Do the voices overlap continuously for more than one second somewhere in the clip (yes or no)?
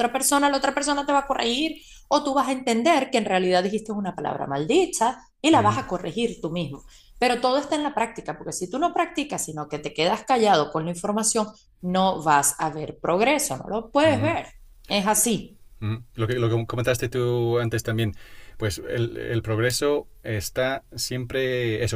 no